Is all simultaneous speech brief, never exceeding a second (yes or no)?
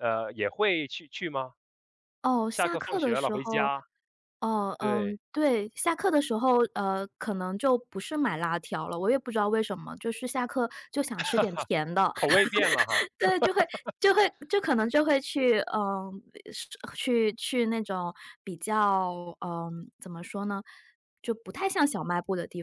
no